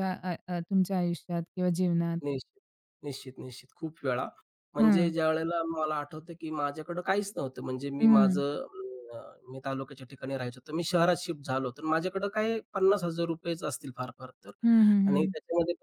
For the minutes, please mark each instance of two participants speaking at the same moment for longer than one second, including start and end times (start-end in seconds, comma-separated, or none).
none